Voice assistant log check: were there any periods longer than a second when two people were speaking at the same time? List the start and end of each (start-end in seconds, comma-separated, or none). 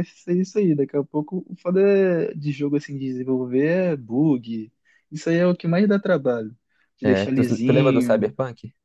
7.0-8.3